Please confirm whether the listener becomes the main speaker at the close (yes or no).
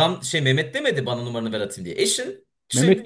yes